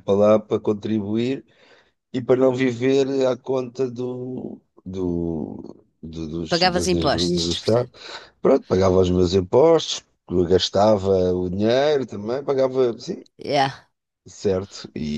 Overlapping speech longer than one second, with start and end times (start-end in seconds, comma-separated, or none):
6.5-7.9